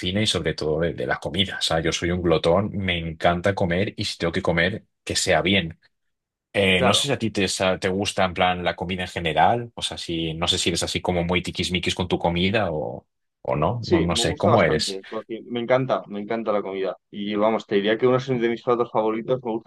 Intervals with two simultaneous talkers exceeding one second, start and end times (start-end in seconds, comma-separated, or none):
13.8-15.0